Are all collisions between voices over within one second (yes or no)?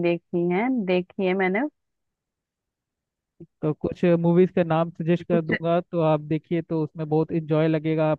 yes